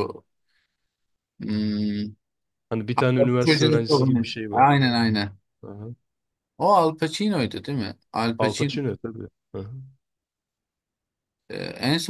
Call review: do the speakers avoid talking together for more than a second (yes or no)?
no